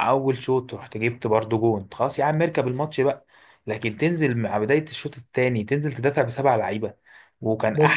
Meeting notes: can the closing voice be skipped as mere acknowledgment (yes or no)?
yes